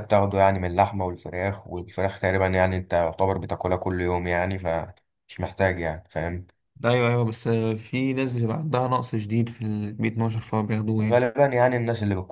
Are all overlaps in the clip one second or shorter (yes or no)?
yes